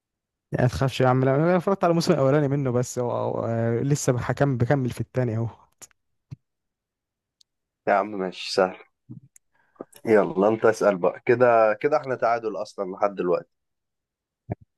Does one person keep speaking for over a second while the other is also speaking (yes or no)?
no